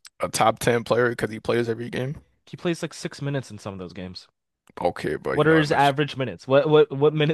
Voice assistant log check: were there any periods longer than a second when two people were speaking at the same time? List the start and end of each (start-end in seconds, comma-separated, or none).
none